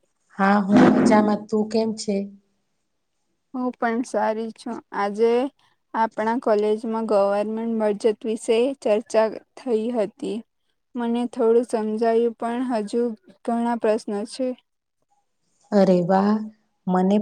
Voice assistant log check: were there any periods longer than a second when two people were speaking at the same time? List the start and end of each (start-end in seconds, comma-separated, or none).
none